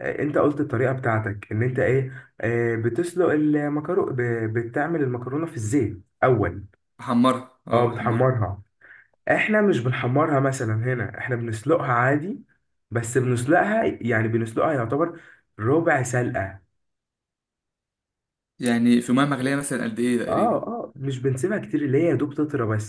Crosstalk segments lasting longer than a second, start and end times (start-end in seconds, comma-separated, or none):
none